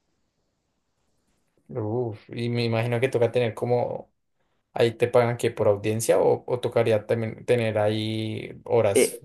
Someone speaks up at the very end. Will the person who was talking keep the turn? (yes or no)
no